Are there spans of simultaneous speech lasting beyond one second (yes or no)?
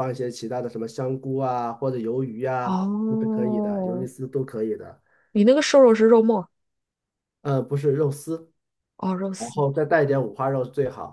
yes